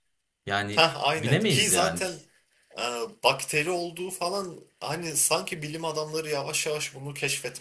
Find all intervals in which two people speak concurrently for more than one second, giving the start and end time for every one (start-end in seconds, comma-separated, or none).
0.8-2.0